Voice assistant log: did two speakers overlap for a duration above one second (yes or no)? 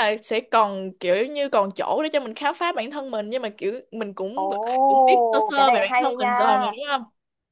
yes